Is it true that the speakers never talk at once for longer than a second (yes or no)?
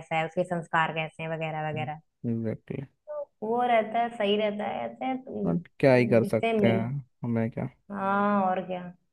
no